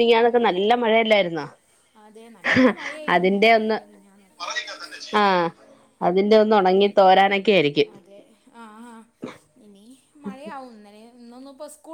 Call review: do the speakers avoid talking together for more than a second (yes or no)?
yes